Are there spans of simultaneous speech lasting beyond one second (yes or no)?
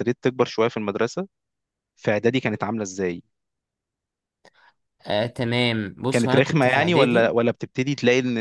yes